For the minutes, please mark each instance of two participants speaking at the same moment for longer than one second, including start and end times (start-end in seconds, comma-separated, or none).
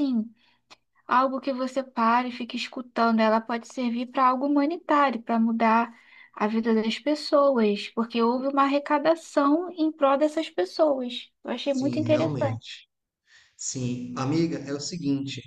11.6-12.8